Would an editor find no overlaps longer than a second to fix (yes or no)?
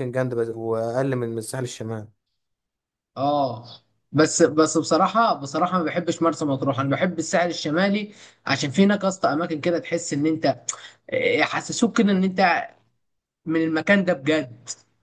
yes